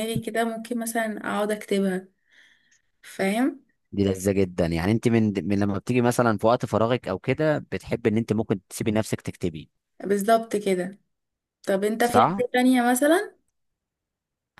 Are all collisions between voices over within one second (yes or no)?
yes